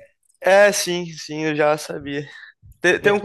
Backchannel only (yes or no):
yes